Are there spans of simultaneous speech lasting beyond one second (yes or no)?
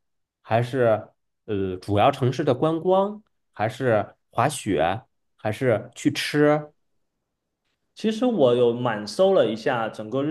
no